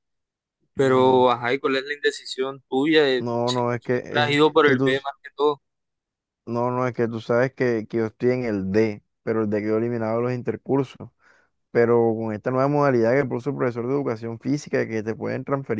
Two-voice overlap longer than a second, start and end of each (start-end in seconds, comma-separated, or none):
3.2-4.9